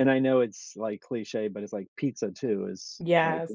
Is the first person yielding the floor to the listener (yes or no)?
no